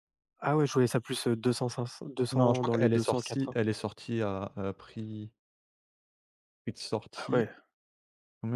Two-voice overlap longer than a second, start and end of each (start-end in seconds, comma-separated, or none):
2.3-3.6